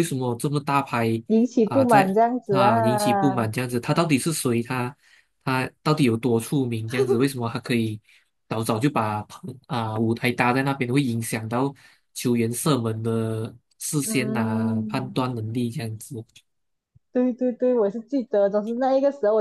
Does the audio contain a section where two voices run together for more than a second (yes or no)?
yes